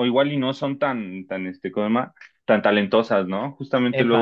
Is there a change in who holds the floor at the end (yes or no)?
no